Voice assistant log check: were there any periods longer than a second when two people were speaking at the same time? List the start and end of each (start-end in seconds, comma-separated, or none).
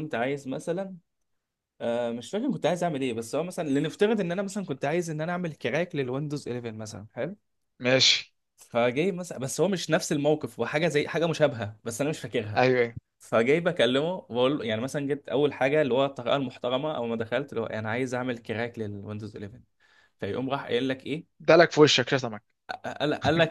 none